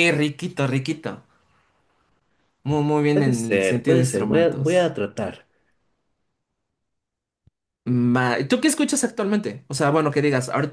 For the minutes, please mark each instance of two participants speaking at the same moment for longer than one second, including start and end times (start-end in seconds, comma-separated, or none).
3.1-4.9